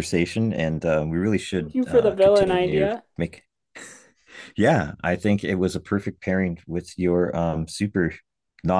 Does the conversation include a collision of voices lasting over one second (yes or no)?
yes